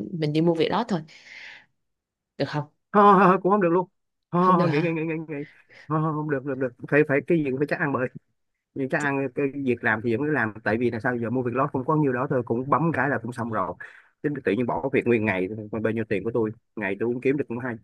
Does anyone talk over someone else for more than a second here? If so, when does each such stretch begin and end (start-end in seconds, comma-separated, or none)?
none